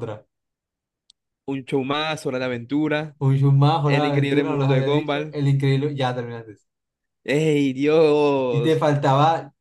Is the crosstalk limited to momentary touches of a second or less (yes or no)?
no